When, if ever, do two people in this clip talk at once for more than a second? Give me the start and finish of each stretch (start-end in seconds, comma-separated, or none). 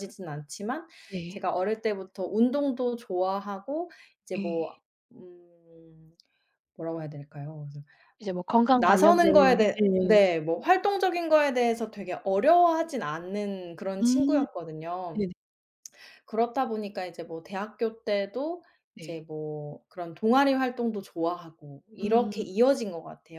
8.8-10.2